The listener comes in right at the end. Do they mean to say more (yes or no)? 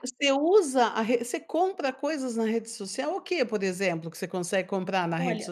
yes